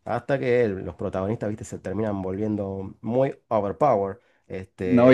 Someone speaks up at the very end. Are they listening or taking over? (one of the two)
taking over